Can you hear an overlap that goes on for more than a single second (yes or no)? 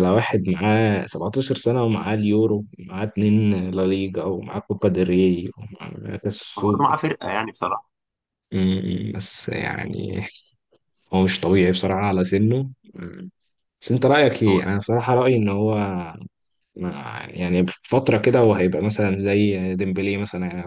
no